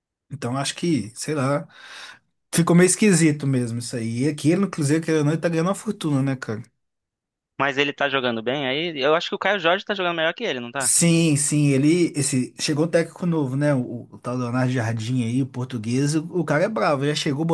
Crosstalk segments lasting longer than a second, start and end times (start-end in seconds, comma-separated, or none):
none